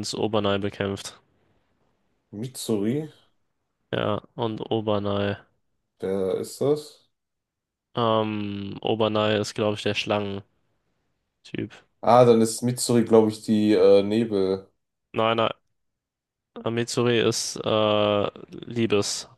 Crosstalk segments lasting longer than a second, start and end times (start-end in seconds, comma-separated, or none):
none